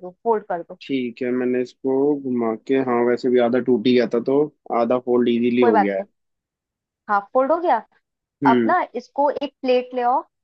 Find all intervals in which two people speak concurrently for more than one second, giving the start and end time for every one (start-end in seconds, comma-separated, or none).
none